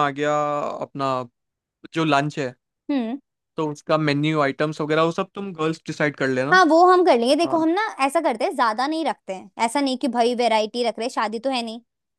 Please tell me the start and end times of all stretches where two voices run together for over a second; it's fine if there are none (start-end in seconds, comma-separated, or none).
none